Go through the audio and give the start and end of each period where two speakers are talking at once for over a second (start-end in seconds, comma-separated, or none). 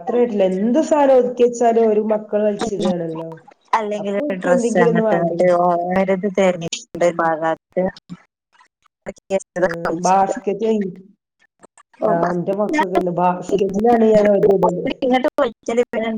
none